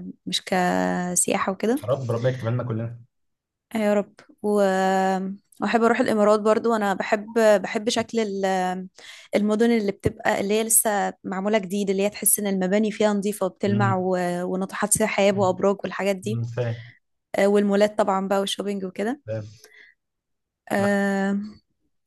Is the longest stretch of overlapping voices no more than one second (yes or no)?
yes